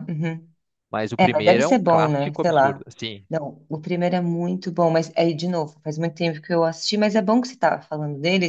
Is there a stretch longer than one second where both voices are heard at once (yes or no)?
yes